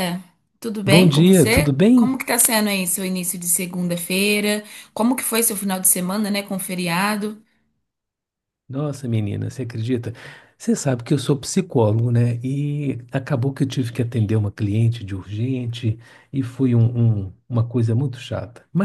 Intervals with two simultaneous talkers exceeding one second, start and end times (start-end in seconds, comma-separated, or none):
0.8-2.1